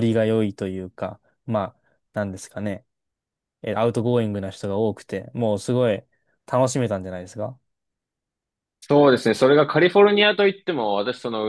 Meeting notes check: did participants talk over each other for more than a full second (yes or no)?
no